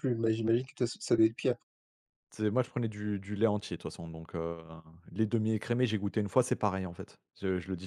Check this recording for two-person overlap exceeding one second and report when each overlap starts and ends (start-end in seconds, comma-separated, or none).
none